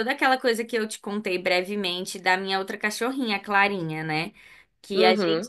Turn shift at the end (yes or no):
no